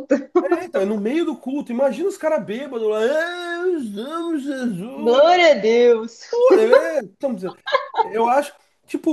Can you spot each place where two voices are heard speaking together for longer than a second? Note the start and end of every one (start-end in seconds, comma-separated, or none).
none